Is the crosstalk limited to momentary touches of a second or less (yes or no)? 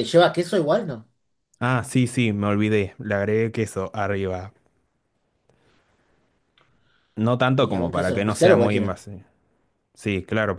no